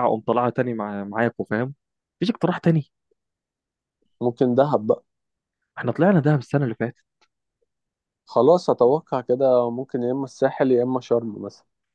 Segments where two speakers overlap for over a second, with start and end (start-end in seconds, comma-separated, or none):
none